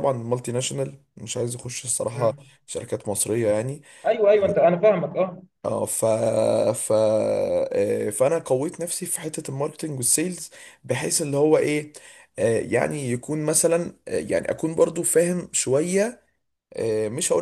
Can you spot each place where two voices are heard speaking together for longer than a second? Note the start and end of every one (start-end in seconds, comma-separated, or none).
none